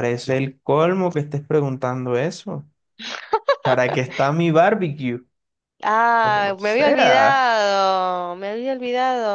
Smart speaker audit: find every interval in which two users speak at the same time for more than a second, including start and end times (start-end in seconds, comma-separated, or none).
6.2-7.5